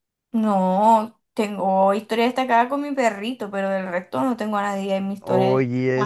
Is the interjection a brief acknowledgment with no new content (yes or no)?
no